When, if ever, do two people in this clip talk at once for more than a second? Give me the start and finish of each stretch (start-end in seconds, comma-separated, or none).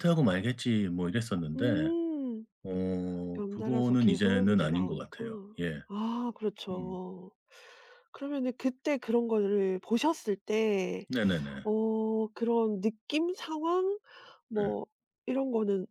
3.4-5.2